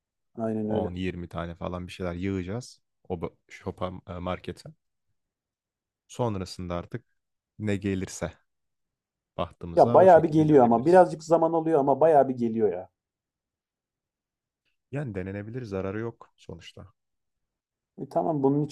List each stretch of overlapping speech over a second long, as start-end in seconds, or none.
9.7-11.1